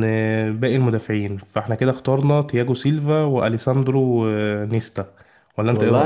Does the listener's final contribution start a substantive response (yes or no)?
yes